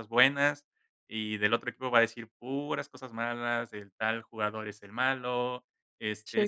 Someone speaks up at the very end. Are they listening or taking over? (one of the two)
listening